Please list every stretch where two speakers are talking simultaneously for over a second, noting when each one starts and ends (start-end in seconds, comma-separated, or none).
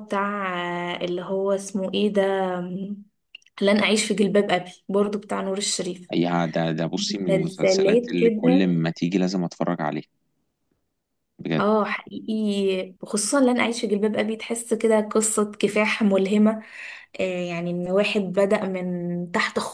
7.0-8.7